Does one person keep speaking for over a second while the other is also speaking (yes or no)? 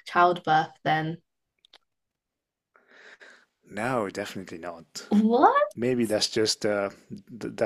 no